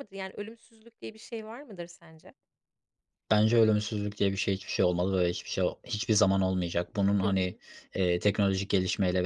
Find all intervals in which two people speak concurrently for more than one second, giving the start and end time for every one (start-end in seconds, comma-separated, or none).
none